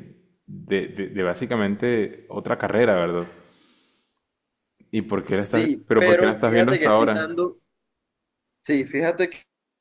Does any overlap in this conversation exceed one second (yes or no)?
yes